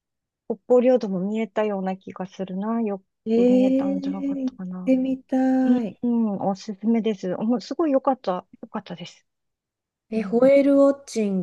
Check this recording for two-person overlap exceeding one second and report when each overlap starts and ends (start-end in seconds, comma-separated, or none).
3.3-4.9